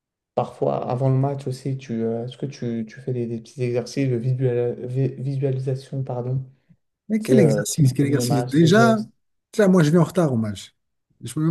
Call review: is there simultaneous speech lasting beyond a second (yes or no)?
yes